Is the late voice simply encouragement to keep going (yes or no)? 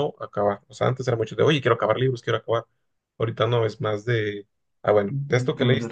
yes